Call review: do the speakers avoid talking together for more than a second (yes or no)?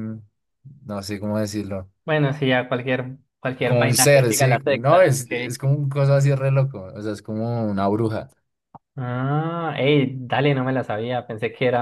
no